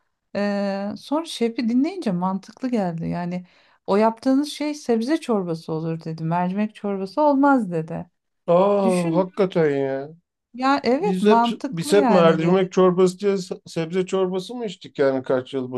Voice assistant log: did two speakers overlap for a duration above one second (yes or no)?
yes